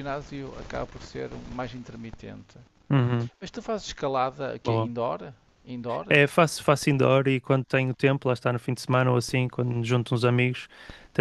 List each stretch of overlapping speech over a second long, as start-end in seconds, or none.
none